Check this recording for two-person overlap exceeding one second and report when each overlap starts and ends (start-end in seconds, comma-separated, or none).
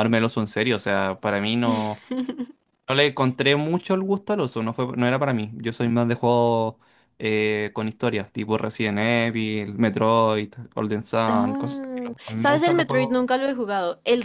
11.3-13.2